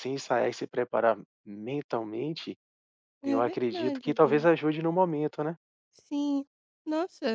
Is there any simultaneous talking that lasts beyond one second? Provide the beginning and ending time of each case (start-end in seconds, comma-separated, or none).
3.2-4.5